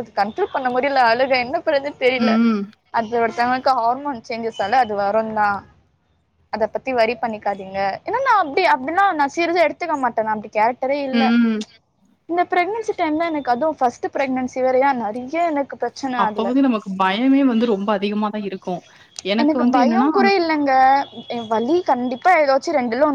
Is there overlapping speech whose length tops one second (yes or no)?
no